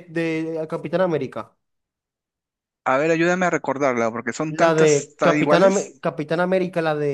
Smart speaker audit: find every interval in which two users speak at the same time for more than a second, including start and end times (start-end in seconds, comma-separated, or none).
4.5-6.0